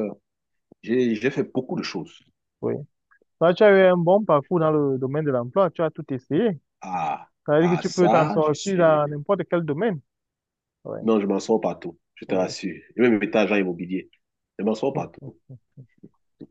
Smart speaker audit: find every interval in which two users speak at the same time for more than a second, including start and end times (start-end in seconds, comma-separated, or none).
7.5-9.0